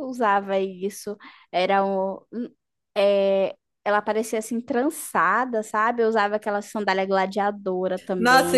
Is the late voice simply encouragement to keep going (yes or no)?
no